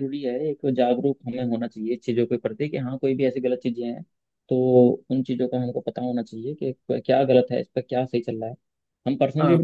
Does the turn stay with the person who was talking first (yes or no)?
yes